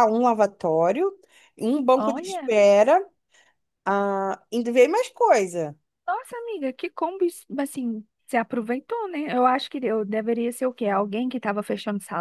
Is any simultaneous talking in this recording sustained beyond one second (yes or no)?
no